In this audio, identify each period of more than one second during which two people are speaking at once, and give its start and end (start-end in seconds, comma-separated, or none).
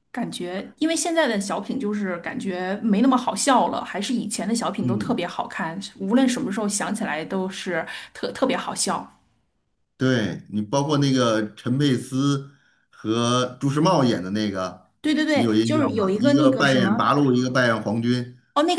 15.3-17.1